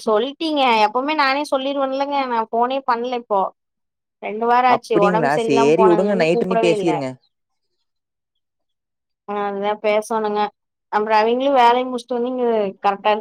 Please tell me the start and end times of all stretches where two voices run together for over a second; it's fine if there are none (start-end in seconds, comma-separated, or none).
4.8-6.9